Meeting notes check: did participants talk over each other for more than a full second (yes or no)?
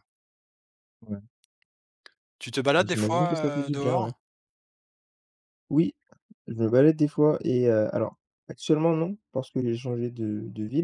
yes